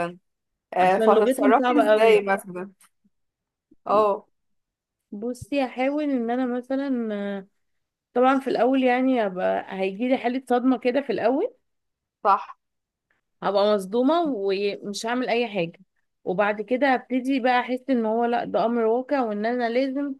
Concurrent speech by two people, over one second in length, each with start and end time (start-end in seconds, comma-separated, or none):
0.8-2.2